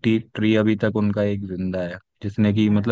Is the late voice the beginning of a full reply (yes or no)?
no